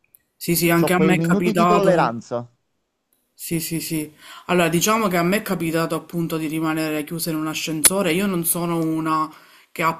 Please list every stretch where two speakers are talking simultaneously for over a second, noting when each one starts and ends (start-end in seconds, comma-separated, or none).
0.8-2.1